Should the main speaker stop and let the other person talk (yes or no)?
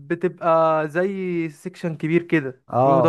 yes